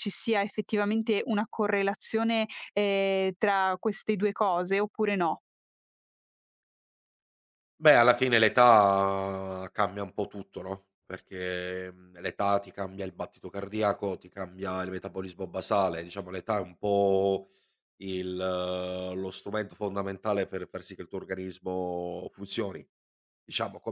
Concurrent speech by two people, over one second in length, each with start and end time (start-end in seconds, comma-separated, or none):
none